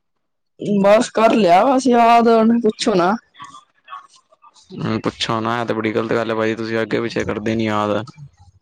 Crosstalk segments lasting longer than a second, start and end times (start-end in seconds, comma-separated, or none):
none